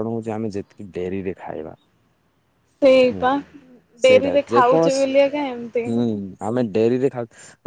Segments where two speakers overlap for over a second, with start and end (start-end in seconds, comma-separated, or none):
4.1-5.8